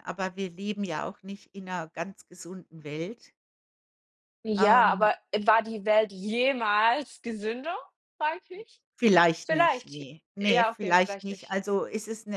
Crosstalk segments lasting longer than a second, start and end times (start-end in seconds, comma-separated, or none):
9.4-11.6